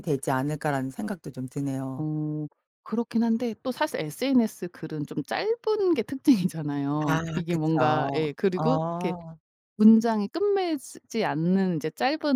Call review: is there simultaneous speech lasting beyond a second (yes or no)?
yes